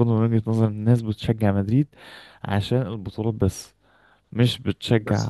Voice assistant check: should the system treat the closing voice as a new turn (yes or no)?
no